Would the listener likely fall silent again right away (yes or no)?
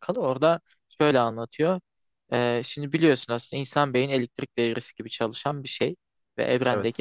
yes